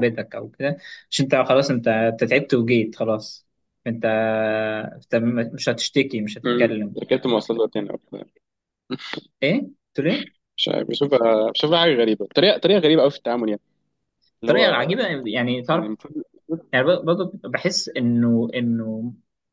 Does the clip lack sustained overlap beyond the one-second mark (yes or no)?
yes